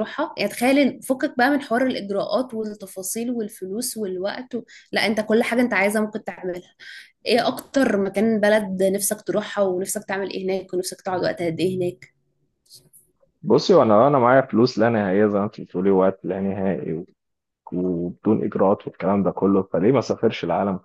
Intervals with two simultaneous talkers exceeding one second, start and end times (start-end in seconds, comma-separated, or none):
none